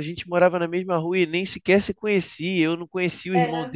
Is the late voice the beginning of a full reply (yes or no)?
no